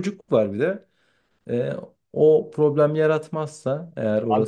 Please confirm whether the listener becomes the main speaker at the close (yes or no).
yes